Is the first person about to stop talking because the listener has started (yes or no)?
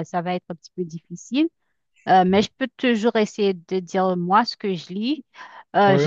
no